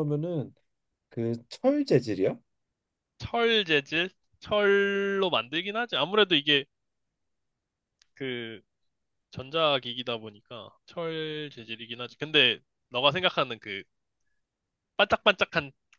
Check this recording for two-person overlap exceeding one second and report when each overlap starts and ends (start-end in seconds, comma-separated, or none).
none